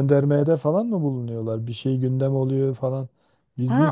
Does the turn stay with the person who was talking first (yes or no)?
no